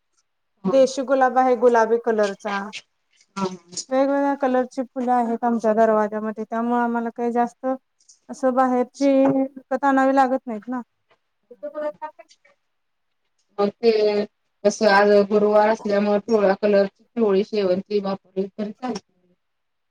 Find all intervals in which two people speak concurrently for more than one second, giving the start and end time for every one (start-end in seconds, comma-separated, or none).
none